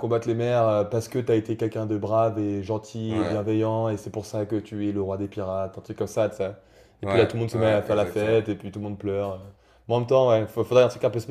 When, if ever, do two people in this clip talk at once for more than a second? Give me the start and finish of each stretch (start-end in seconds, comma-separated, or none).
7.0-8.4